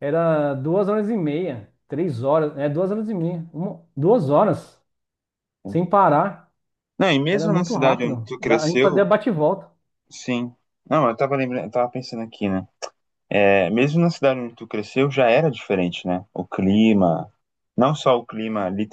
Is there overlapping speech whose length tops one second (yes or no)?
yes